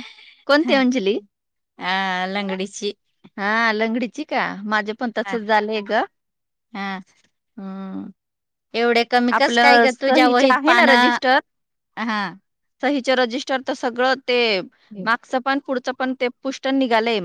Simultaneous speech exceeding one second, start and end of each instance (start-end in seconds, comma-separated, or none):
9.3-11.2